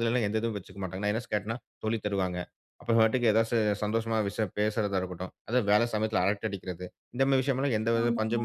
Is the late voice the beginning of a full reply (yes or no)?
no